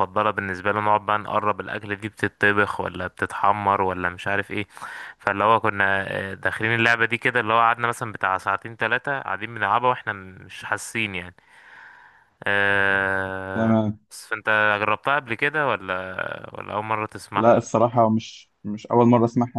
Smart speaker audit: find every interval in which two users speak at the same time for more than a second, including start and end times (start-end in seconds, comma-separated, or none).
none